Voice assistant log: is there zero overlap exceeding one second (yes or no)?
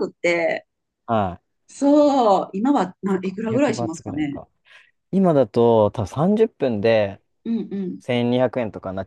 no